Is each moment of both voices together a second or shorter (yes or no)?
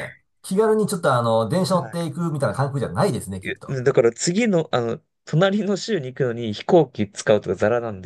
yes